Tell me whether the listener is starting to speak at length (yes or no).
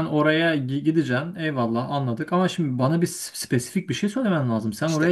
yes